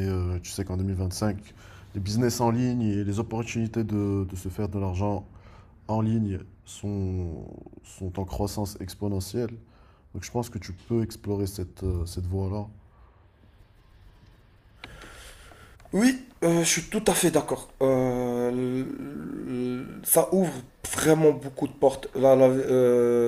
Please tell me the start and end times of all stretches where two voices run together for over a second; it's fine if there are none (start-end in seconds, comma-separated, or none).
none